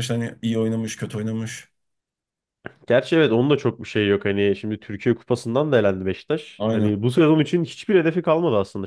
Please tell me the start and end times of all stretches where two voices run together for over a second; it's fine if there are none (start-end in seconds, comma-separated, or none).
none